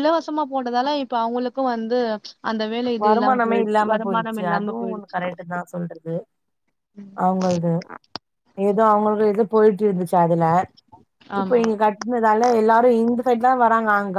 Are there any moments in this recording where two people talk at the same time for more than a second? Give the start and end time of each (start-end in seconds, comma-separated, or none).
3.0-5.2